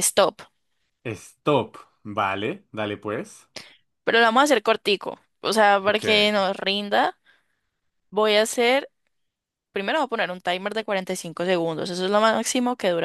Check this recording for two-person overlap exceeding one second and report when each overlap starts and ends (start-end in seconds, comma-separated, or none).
none